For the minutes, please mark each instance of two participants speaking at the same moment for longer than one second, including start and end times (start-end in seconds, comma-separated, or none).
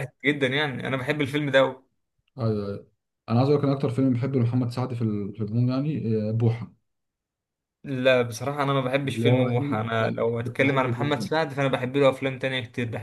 9.1-11.3